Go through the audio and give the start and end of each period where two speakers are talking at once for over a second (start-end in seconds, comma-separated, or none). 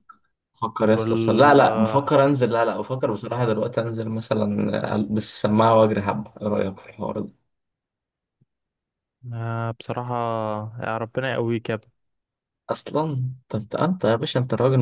0.9-2.2